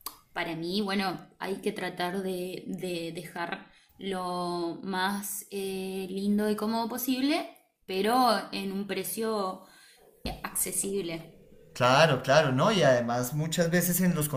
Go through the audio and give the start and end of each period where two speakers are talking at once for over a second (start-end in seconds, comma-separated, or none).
none